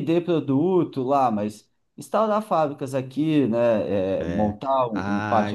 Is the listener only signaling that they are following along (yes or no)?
no